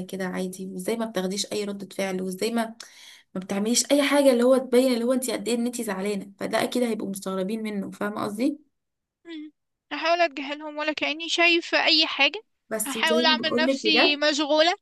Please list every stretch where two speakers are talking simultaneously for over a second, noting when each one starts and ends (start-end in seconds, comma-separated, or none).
12.8-14.2